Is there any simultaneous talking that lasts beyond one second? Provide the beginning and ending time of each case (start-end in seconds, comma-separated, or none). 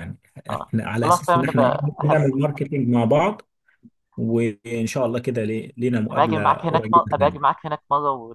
0.5-2.3, 6.1-7.6